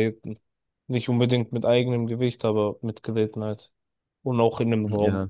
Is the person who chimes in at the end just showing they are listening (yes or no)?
no